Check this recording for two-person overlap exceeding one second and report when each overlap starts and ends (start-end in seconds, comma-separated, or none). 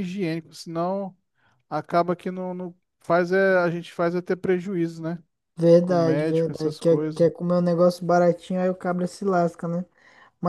5.8-7.3